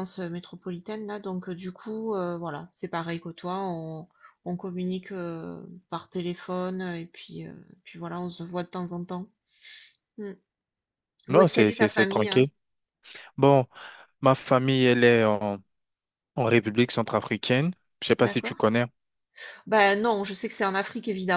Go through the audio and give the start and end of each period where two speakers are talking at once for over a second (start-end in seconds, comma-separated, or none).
11.3-12.5